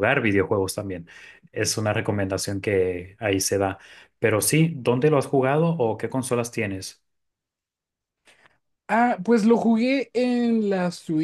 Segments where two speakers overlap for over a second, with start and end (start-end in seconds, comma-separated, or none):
none